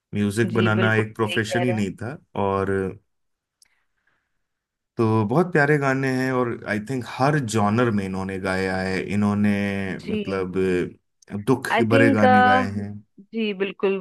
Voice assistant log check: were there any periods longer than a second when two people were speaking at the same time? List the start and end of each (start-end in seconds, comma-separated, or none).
0.5-1.9